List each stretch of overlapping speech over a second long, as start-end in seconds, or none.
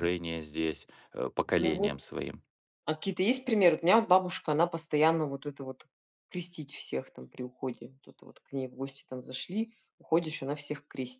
none